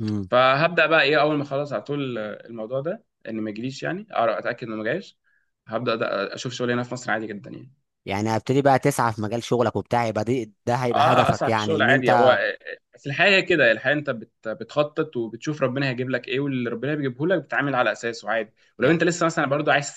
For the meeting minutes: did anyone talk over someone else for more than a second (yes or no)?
yes